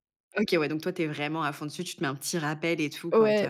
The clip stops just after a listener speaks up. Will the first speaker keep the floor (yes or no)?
no